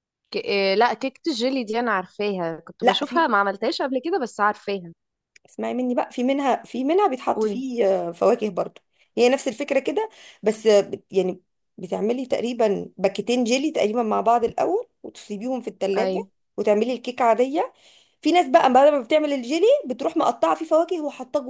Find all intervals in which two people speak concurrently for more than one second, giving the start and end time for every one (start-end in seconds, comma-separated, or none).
none